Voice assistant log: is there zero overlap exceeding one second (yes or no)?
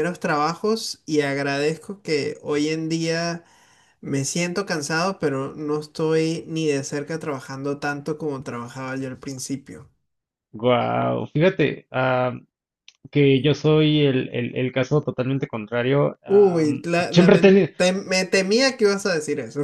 no